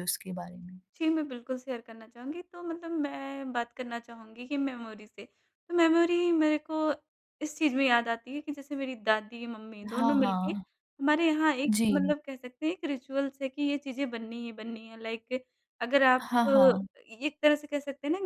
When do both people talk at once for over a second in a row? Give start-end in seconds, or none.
none